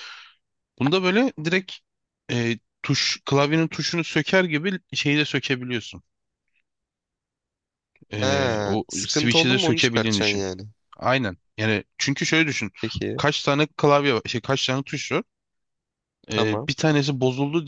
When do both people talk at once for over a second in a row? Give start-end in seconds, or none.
8.2-10.4